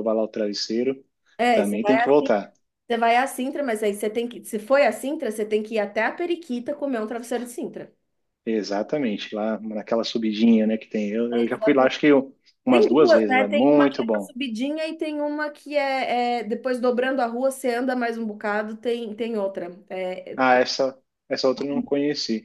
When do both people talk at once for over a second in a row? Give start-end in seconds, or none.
12.7-14.3